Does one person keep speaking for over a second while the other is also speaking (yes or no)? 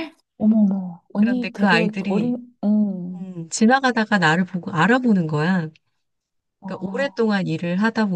yes